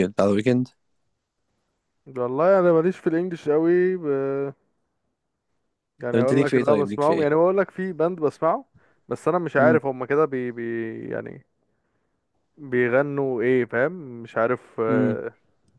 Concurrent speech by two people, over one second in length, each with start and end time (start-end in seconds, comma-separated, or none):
6.1-7.4